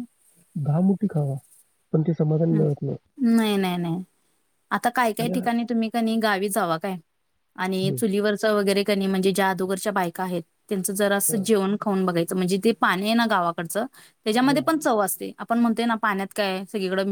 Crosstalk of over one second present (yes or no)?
no